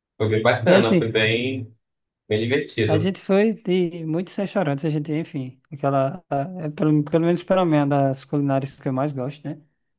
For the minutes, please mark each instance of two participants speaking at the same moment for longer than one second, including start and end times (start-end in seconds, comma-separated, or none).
none